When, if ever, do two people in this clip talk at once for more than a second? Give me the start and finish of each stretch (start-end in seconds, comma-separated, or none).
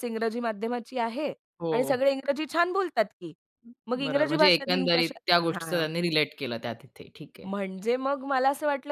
4.0-5.8